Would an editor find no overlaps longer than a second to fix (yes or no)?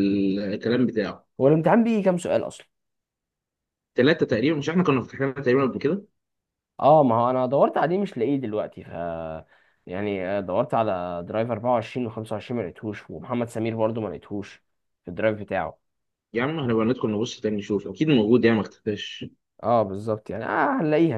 yes